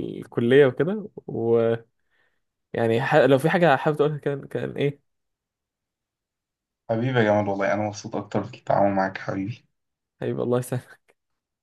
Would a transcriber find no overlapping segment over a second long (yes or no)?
yes